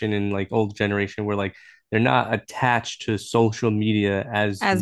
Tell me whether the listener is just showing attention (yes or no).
yes